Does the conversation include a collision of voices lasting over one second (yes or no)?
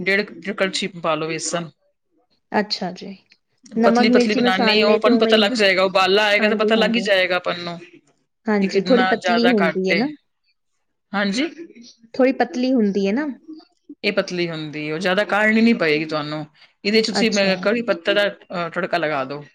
yes